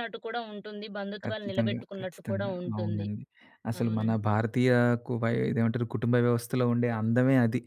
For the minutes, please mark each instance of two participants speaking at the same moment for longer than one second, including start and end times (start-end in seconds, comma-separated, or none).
1.2-3.1